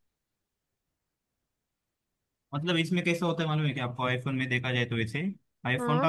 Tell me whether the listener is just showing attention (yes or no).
yes